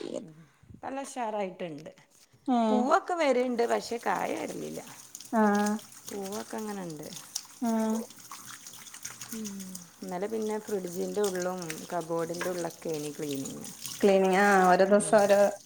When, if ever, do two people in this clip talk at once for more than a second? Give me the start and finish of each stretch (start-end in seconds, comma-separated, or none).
none